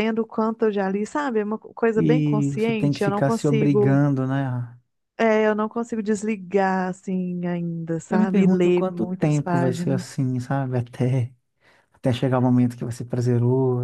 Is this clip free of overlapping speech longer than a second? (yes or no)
no